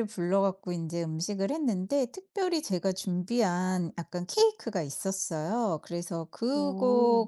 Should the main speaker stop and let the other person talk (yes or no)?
no